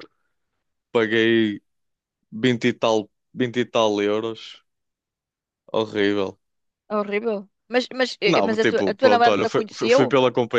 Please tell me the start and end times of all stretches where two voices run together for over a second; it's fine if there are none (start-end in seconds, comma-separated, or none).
8.3-10.0